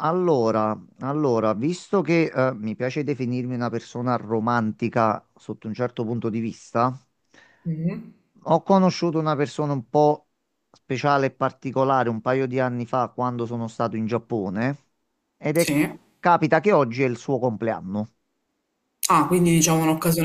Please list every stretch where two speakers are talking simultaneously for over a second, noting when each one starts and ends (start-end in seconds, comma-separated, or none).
none